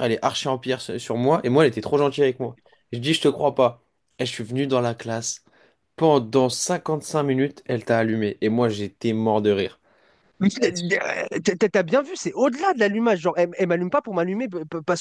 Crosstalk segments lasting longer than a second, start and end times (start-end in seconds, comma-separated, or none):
none